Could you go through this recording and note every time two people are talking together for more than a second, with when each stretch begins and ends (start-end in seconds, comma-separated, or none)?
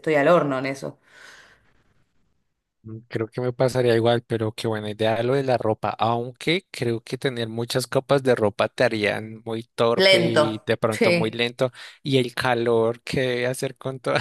10.0-11.4